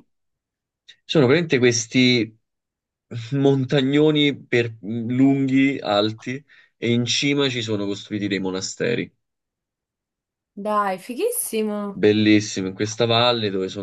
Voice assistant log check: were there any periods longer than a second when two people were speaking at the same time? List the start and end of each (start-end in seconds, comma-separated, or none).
none